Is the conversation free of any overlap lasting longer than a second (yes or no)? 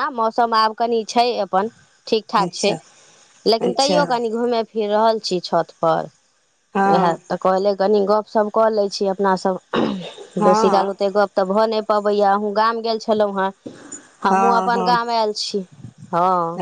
yes